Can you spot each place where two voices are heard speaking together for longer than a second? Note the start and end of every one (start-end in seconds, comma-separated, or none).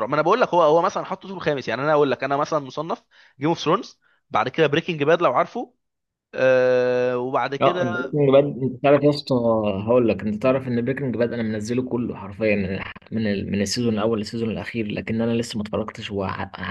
none